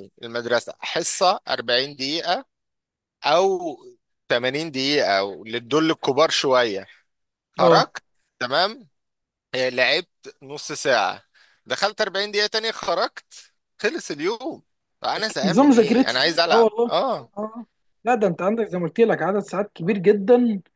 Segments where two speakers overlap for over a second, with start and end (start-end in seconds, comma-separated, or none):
15.2-16.9